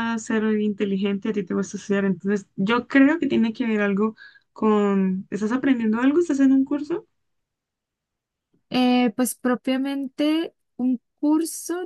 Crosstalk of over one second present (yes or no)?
no